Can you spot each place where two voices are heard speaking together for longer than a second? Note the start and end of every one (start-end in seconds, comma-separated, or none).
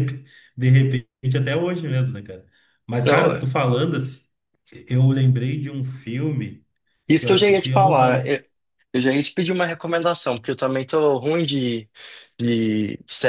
7.1-8.4